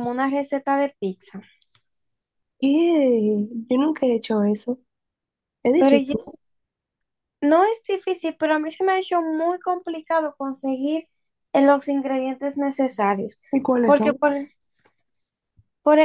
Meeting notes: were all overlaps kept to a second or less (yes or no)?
yes